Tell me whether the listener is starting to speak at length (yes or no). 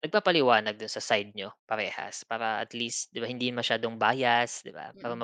no